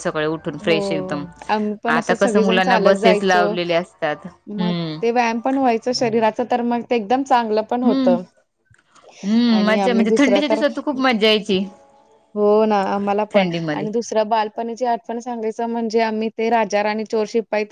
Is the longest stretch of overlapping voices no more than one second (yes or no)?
no